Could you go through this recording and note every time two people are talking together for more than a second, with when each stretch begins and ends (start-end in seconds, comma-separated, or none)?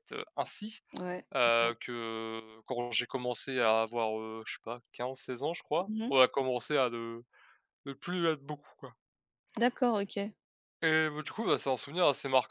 none